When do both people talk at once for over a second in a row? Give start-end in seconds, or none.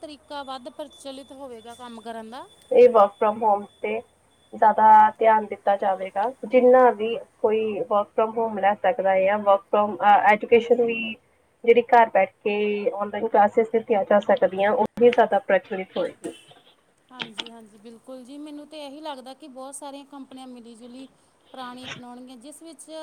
none